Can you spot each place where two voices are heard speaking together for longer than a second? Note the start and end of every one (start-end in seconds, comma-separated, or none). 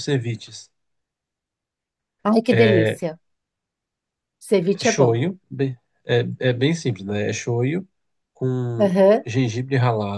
none